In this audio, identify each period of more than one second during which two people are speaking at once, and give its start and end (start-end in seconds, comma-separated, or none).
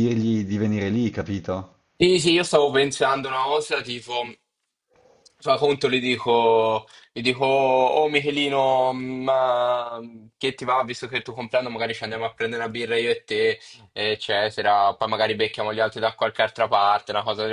none